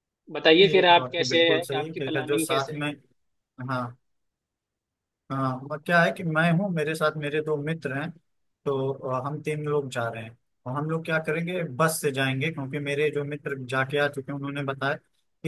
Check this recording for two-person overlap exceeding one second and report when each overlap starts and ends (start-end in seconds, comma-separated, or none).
0.6-2.8